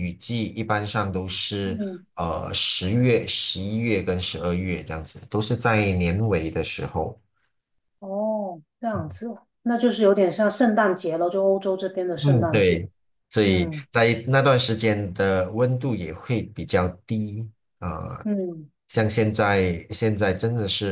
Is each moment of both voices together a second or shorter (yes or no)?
yes